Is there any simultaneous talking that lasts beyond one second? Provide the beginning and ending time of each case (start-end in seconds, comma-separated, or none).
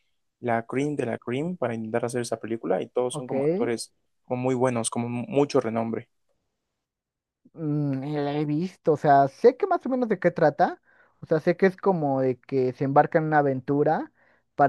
none